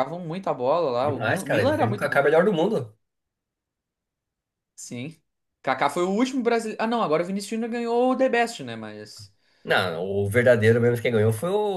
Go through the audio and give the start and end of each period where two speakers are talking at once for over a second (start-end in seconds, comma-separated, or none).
1.0-2.3